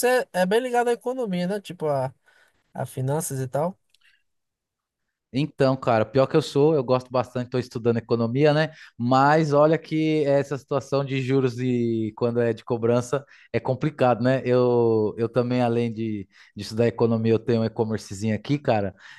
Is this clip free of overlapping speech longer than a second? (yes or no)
yes